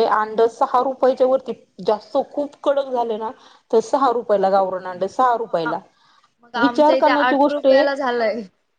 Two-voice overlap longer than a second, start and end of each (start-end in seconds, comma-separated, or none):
6.6-7.8